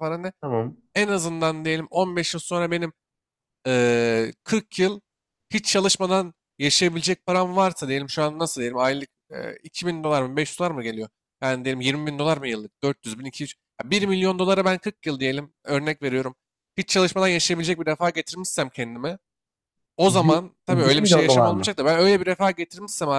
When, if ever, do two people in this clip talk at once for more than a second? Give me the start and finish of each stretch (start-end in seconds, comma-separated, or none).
20.1-21.8